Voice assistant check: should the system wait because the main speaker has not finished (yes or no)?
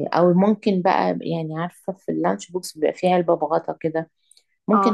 yes